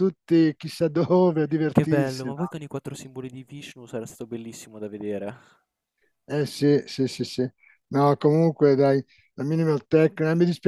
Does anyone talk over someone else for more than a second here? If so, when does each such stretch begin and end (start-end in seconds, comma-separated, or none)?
none